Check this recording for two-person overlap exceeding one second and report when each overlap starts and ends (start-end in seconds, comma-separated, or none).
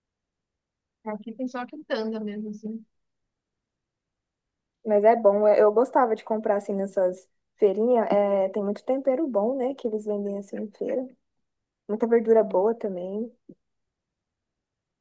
none